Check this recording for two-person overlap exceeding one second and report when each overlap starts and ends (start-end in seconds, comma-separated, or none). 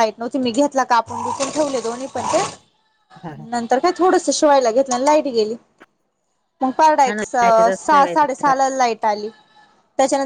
7.1-8.5